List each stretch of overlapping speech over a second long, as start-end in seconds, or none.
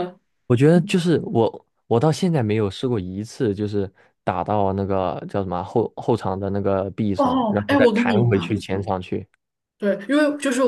7.2-8.6